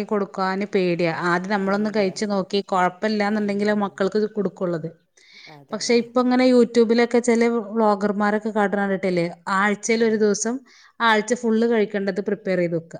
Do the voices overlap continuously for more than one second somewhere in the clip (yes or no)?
no